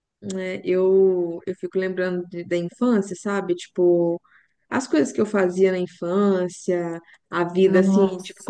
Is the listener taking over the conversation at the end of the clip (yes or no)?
no